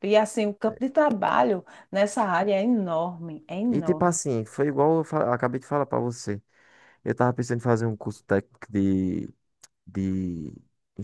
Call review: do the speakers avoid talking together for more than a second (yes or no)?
yes